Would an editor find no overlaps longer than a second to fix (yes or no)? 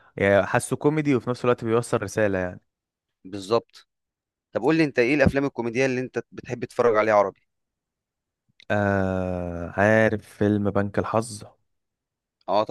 yes